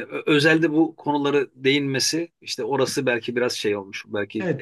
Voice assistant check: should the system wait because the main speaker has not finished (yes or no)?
no